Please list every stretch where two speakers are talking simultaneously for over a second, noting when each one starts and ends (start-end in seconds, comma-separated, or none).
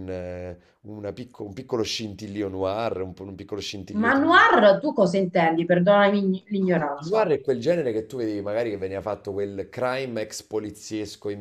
none